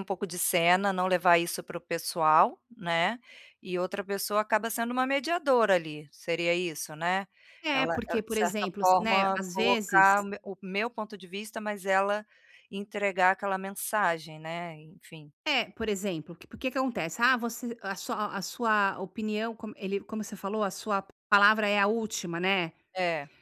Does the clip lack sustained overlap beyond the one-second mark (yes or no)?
no